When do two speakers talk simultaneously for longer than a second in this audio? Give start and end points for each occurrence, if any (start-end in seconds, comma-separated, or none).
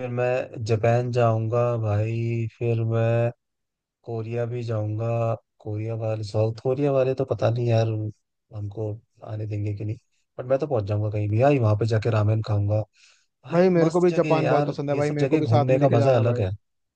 13.5-16.4